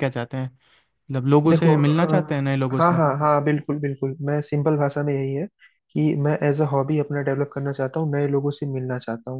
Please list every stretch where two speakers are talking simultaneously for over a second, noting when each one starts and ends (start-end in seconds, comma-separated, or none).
1.5-3.0